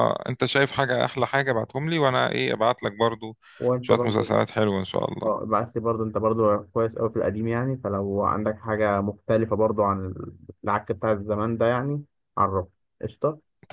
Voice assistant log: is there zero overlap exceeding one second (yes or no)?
yes